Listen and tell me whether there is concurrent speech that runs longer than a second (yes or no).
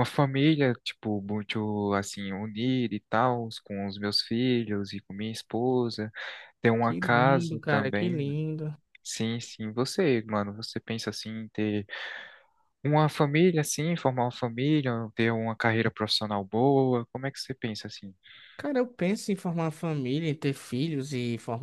yes